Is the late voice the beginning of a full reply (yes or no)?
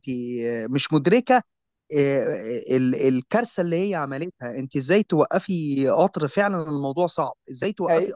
no